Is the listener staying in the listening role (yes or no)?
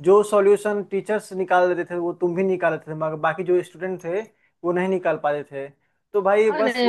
no